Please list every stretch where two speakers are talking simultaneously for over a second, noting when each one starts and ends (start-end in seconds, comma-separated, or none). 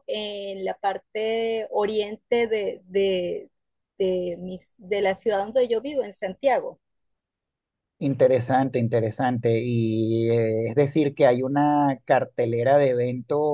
none